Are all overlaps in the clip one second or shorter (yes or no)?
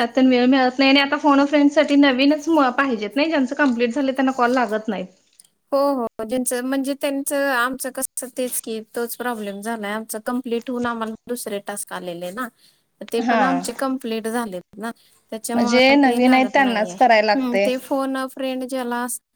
no